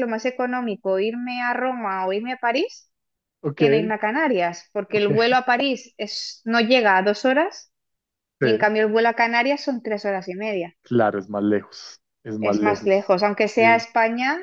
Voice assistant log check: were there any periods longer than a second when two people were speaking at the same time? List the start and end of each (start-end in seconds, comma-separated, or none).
12.4-13.8